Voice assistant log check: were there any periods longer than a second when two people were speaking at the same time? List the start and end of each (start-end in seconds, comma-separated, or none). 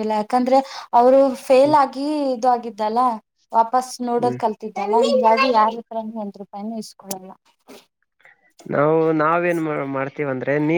none